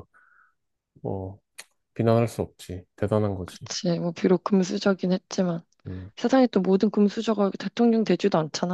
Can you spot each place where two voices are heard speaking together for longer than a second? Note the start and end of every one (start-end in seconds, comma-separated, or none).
none